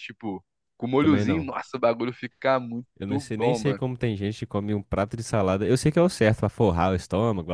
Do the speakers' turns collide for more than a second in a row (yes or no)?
no